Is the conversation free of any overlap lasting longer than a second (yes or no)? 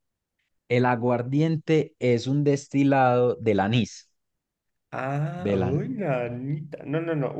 yes